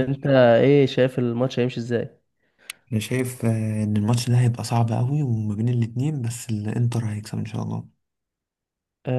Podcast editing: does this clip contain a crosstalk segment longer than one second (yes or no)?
no